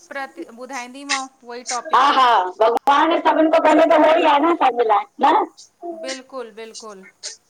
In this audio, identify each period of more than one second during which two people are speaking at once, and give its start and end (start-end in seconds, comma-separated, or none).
none